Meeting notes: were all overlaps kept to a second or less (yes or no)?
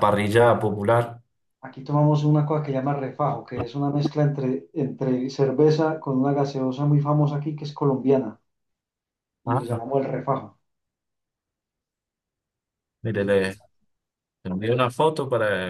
yes